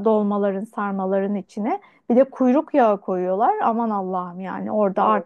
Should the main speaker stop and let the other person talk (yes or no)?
no